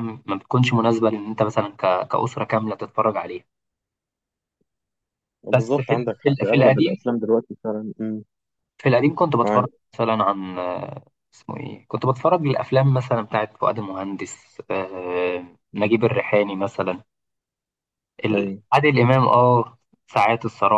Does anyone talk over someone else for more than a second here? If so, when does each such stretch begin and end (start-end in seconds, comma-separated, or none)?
5.5-7.0